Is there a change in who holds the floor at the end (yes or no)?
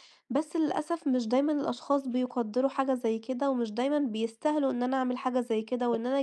no